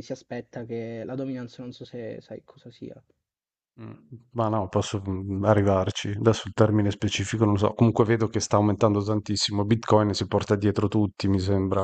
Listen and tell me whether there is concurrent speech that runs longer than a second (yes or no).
no